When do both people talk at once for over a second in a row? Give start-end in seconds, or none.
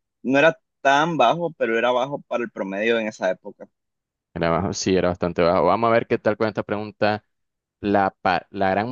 none